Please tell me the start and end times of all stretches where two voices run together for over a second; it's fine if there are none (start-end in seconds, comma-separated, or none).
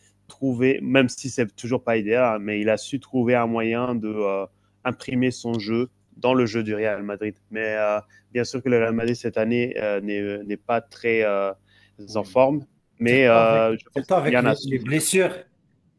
13.1-15.0